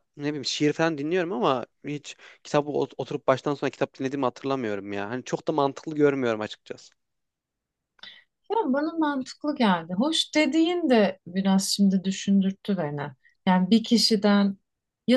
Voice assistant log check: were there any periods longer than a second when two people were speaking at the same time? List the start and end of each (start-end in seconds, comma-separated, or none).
none